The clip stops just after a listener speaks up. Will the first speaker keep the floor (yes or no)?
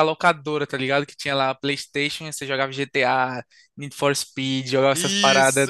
no